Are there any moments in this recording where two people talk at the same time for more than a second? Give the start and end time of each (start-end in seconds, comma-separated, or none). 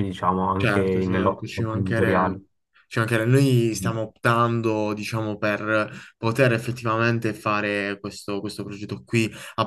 0.6-2.4